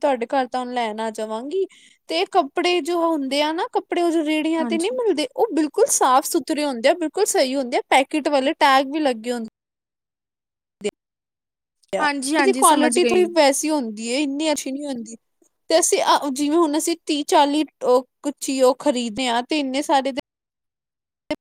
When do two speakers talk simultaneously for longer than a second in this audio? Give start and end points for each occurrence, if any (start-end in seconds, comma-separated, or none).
12.0-13.2